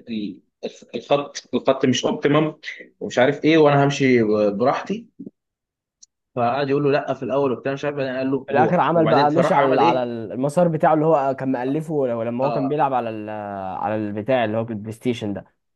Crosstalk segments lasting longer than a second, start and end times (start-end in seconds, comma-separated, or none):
8.4-10.1